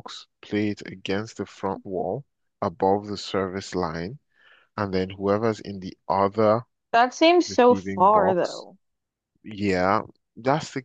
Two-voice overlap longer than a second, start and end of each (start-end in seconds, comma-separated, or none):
7.5-8.7